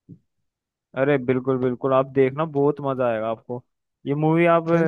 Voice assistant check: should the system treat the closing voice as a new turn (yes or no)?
no